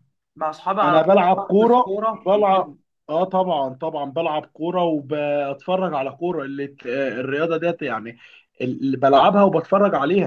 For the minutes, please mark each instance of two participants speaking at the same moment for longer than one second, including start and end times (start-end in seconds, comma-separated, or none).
0.8-2.7